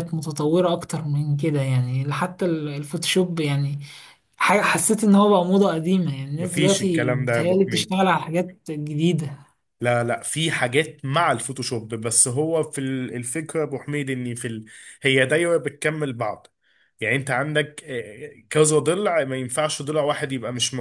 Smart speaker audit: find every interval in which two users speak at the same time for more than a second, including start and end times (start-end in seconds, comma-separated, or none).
6.4-8.0